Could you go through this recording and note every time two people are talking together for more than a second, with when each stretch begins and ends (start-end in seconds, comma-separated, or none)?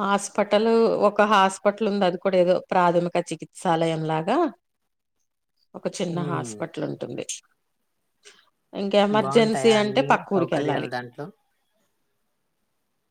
9.2-10.9